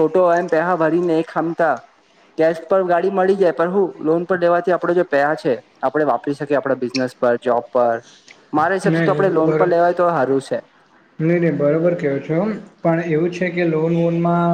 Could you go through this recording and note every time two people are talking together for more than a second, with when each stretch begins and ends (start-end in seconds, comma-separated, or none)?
none